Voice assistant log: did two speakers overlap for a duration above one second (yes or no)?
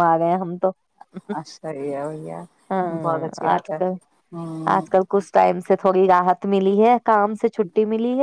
no